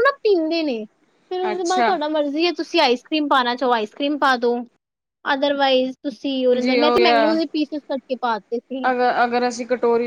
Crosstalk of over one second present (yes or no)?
no